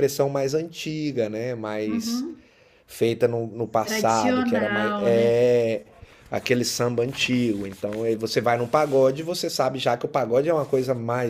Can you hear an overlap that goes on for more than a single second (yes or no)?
yes